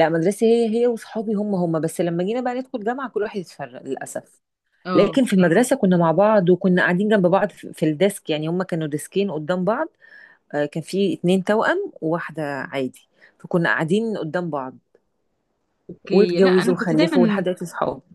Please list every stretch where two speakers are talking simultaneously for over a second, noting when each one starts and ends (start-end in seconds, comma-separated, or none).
16.1-17.4